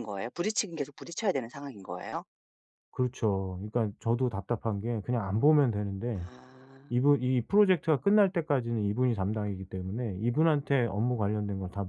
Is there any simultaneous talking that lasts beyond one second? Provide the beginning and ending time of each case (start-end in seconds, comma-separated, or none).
none